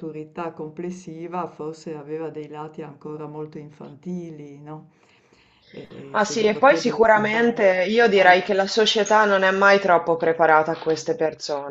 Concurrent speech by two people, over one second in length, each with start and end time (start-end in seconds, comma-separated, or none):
6.1-8.6